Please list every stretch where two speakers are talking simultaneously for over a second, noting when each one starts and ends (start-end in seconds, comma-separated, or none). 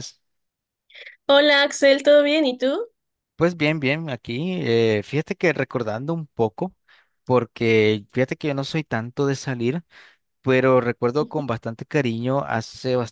none